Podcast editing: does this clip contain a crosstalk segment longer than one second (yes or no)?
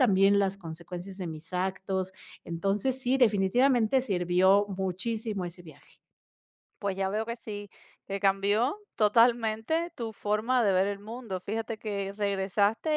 no